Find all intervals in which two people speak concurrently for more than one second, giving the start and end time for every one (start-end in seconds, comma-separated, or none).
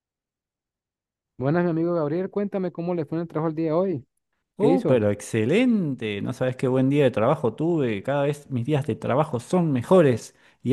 none